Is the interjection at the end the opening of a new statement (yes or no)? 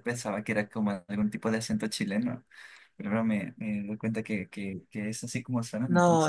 yes